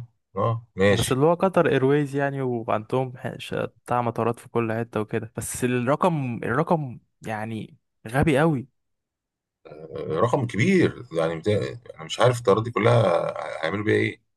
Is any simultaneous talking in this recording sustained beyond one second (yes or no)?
no